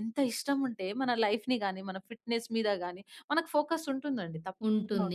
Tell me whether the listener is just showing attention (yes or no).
no